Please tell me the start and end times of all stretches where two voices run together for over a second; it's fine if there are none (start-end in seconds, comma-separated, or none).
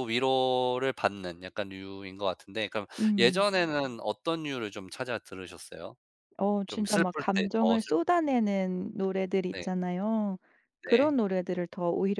6.7-8.0